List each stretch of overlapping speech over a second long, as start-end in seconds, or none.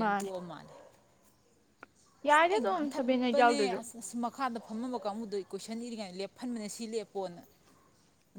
2.3-3.8